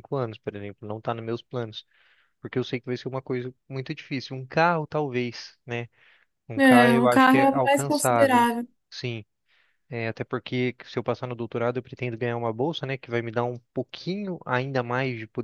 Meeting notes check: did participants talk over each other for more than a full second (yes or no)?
yes